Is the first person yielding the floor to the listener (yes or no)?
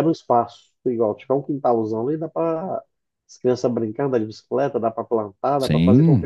yes